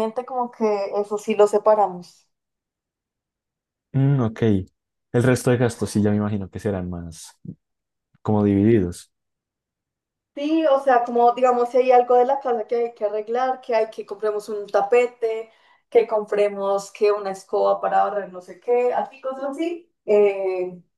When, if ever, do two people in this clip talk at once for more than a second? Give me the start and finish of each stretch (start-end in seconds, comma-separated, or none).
none